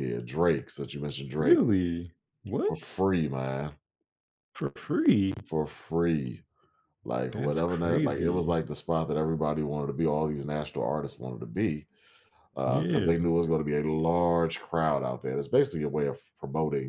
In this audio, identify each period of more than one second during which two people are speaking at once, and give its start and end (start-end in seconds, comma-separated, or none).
7.3-8.6